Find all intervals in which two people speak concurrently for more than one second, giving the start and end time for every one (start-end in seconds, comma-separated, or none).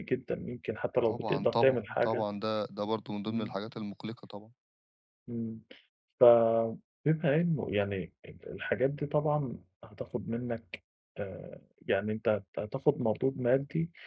1.0-2.3